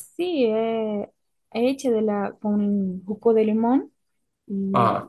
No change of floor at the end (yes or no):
yes